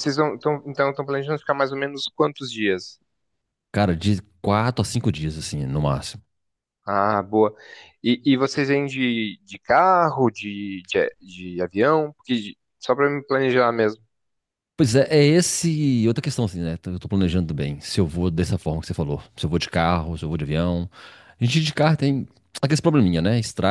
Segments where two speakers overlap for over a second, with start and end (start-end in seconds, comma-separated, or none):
none